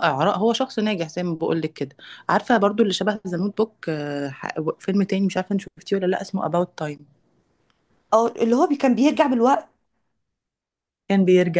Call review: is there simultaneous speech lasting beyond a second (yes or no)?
no